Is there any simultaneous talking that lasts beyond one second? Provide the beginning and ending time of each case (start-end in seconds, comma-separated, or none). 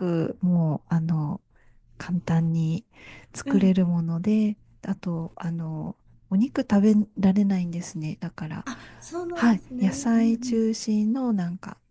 9.3-10.6